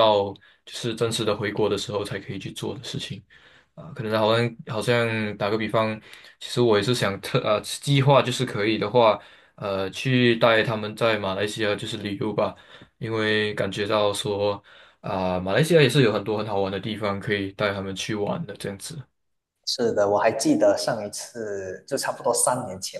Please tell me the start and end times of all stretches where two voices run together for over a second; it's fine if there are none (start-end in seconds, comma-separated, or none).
none